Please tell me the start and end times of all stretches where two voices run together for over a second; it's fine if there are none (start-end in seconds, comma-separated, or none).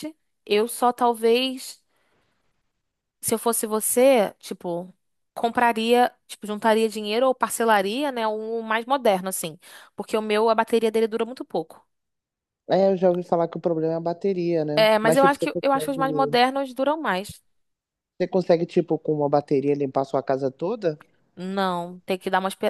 14.8-16.4